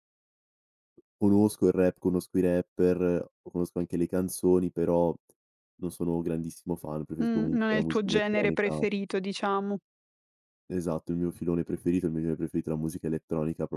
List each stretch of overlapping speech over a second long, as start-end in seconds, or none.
7.2-8.8